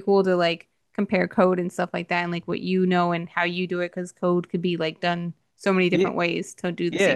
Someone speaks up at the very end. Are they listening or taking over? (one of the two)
taking over